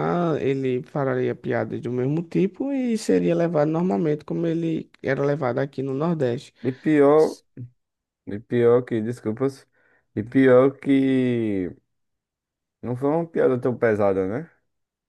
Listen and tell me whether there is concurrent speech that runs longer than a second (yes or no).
no